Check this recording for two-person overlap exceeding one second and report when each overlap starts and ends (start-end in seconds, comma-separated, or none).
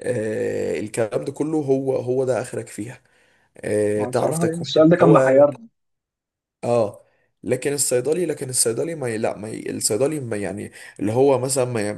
4.0-5.4